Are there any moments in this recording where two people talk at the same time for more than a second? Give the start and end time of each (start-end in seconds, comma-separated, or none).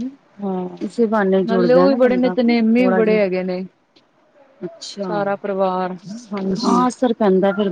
1.4-3.2